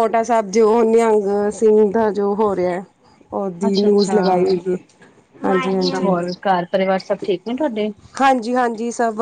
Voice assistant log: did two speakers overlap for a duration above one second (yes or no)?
no